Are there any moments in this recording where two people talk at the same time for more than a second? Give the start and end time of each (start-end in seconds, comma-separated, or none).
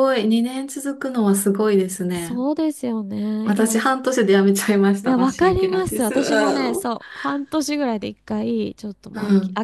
5.0-6.9